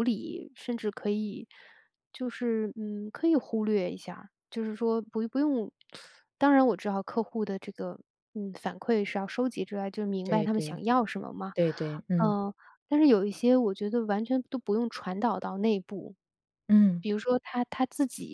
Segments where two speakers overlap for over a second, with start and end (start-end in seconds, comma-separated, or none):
none